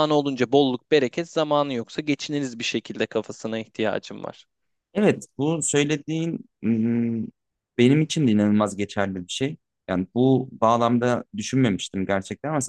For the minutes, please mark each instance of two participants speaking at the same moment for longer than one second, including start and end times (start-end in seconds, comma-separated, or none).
none